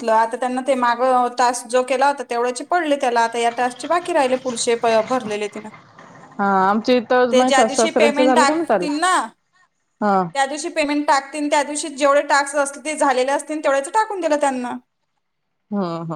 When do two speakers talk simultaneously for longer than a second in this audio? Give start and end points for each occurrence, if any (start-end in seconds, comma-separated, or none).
7.3-8.9